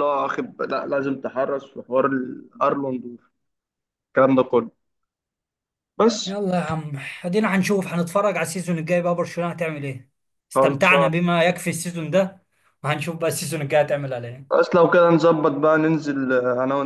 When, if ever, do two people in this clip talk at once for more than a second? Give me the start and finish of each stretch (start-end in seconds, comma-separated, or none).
none